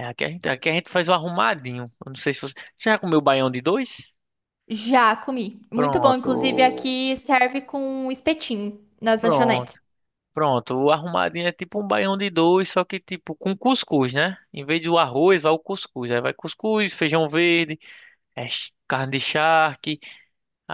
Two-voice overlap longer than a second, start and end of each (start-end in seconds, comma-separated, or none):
5.7-7.0